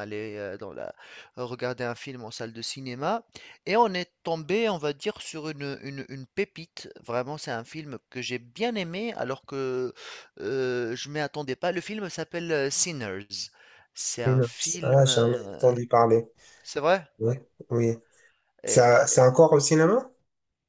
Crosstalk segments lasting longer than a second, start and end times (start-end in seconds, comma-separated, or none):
14.2-15.6